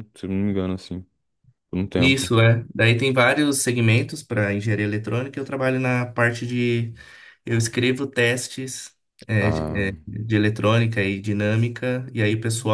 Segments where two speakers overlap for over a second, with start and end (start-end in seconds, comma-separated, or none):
none